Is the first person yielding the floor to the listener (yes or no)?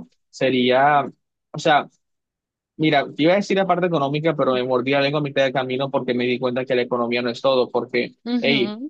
no